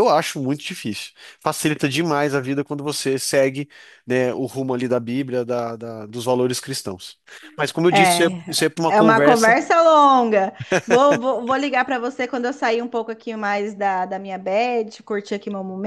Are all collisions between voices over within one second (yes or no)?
no